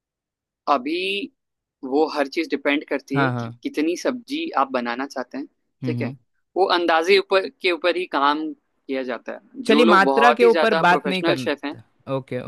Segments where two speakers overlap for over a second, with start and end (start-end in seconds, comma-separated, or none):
9.7-11.8